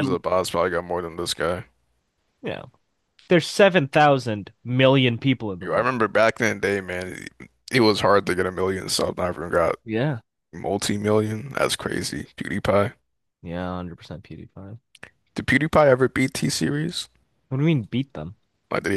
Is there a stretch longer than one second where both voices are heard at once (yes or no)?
no